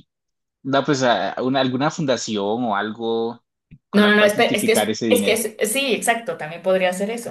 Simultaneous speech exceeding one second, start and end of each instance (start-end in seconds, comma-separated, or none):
3.9-5.4